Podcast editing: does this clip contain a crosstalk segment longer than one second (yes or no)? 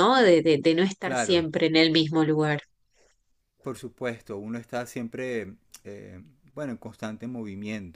no